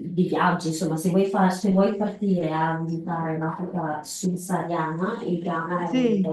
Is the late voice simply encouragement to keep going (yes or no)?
yes